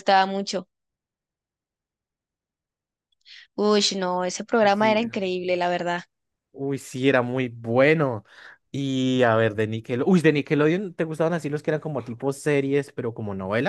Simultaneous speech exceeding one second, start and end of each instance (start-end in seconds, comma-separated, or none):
none